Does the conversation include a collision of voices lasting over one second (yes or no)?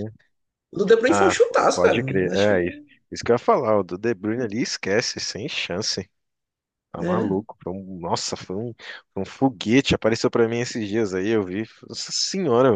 yes